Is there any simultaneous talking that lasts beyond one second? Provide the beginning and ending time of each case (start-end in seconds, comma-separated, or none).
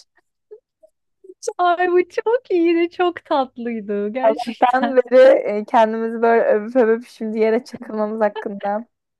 none